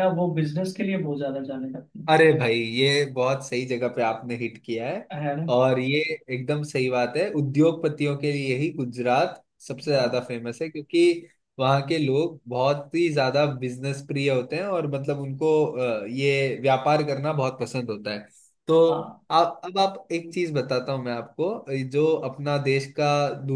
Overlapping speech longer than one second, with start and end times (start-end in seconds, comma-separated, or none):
none